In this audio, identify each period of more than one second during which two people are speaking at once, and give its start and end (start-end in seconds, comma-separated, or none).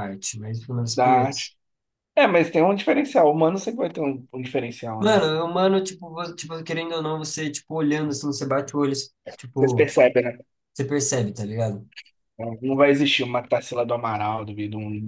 none